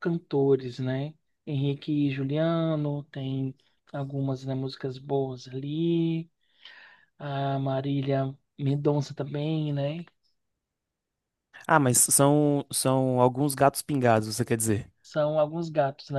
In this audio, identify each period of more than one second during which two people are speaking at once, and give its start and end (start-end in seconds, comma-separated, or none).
none